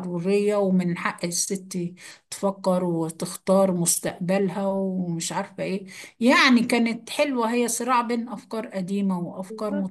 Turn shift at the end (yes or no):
yes